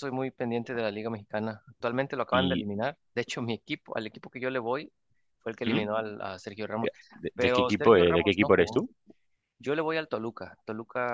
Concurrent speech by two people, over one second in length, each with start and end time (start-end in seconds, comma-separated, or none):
7.3-8.8